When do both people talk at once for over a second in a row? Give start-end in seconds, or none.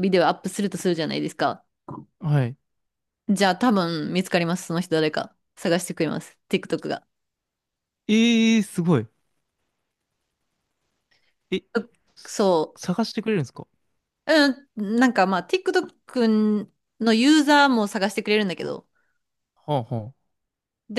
none